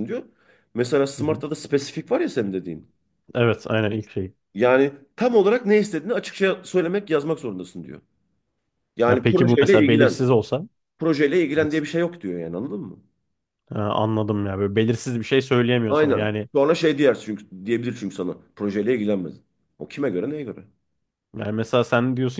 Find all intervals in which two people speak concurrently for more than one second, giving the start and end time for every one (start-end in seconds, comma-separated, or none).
9.1-10.3